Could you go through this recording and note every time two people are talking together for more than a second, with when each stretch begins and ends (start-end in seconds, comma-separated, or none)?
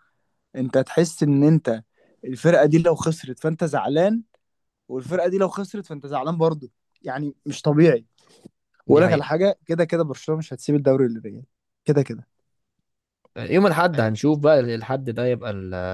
none